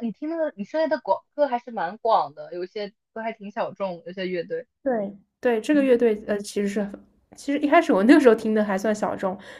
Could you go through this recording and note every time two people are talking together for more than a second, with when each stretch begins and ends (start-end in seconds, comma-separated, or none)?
none